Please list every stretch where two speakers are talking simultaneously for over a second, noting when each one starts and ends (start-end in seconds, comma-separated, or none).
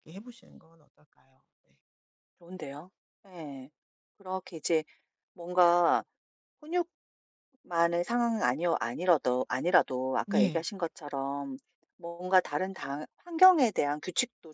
none